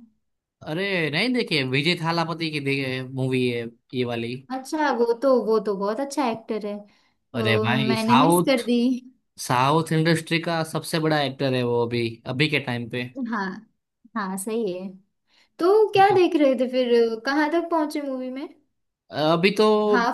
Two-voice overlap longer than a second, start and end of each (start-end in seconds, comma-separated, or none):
7.3-8.6